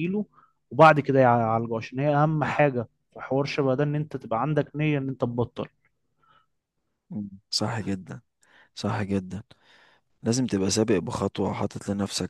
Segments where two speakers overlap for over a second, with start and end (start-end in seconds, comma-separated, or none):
none